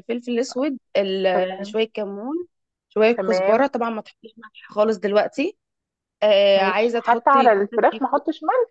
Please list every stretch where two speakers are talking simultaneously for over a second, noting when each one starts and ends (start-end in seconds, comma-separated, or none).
6.6-8.0